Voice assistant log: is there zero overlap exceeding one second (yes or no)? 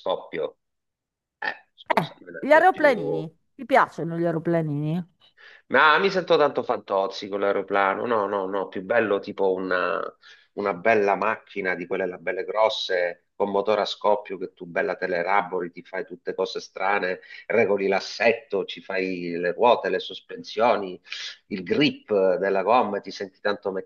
no